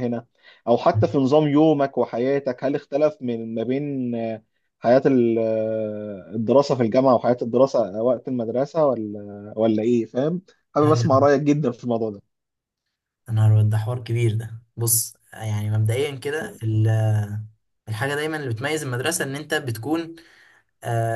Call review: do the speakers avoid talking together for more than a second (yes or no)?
yes